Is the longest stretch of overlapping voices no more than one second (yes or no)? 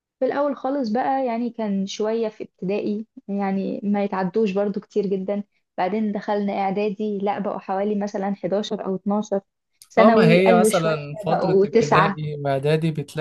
no